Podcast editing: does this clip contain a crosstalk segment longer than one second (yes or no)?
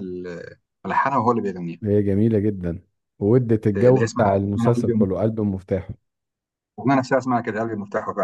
yes